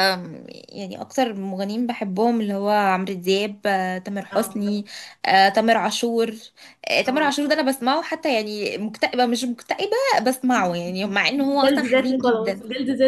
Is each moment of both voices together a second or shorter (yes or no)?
no